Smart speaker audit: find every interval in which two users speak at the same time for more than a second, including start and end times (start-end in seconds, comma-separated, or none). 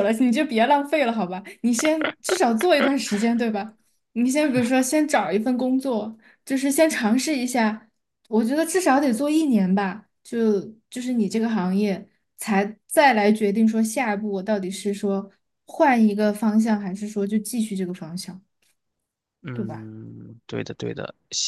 none